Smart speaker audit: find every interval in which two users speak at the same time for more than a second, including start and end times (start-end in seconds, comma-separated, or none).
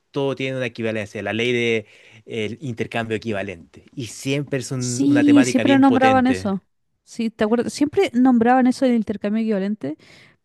4.8-6.5